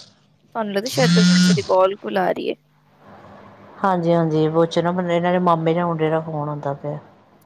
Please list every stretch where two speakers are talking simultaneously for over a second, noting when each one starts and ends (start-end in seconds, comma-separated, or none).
none